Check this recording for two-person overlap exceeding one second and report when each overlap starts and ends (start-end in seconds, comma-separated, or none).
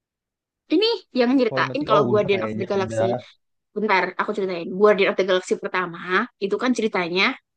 1.5-3.1